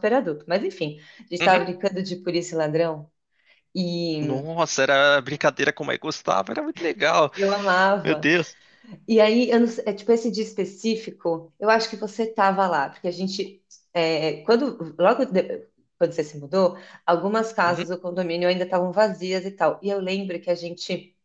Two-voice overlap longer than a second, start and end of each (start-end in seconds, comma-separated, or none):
none